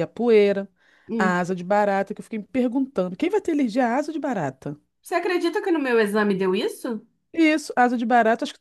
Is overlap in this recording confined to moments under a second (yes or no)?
yes